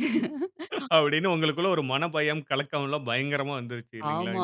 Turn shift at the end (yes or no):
yes